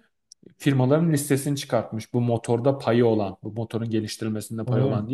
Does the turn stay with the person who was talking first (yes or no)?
yes